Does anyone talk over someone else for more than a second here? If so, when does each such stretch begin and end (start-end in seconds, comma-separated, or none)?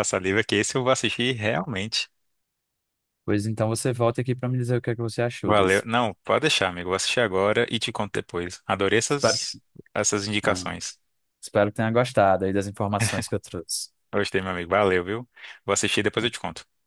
none